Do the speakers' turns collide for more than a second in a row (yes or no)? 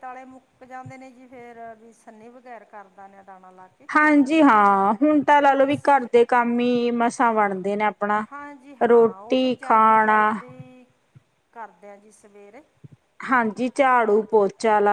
yes